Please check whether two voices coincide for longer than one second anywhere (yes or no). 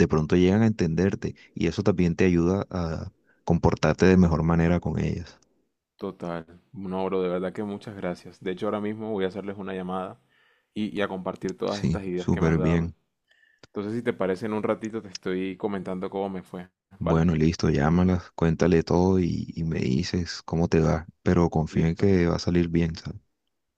yes